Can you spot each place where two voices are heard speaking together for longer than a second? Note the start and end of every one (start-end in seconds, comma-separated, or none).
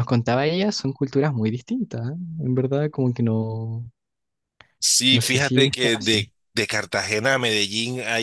5.1-6.3